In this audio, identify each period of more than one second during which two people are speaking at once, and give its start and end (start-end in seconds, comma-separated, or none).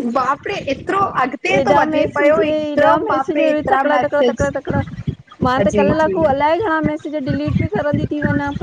1.5-4.5